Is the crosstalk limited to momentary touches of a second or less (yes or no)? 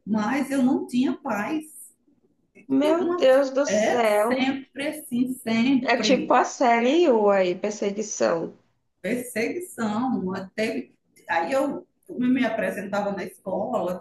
no